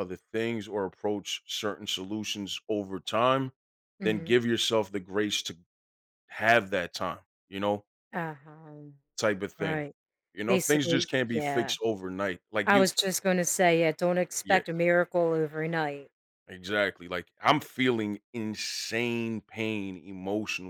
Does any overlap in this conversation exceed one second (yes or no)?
yes